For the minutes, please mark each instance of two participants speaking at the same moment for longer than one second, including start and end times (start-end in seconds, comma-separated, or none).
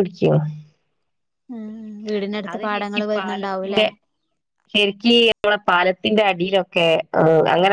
none